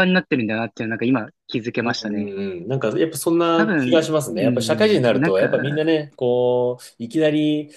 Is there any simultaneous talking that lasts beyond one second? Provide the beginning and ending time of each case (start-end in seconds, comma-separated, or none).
3.5-5.8